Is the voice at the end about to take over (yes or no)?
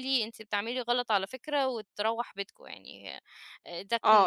yes